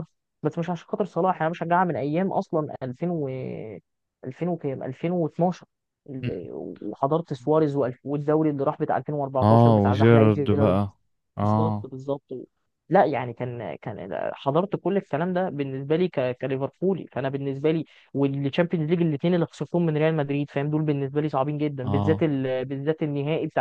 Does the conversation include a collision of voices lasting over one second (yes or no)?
yes